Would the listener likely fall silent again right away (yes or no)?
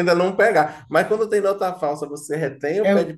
yes